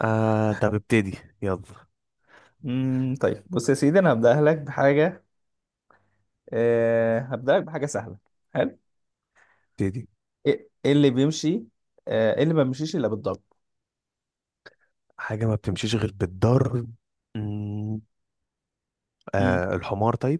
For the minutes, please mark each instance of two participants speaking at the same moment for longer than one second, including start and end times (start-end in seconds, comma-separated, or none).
none